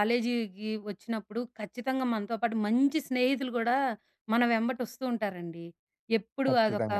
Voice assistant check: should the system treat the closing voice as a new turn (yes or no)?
no